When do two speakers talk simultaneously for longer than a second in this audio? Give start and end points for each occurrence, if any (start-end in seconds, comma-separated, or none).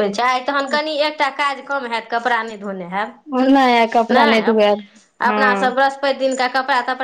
none